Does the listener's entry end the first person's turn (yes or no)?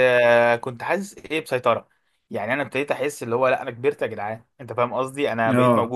no